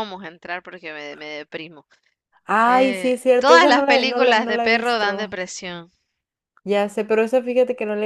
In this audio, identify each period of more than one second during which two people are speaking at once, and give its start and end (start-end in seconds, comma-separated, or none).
2.6-5.3